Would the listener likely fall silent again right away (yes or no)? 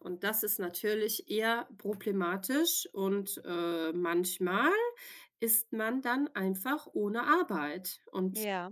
yes